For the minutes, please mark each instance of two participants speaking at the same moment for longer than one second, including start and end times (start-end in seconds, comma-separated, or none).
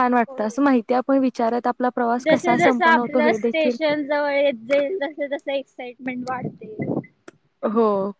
2.2-3.7